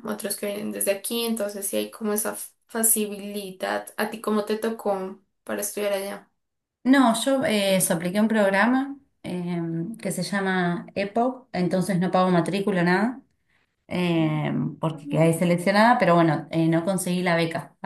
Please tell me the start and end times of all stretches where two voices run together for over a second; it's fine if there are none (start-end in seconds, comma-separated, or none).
none